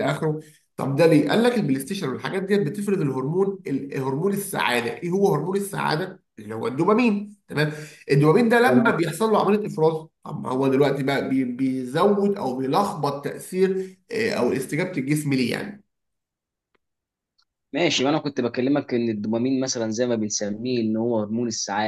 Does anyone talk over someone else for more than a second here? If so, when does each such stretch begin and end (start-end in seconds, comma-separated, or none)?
none